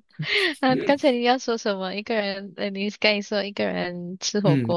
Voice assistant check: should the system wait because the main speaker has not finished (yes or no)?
no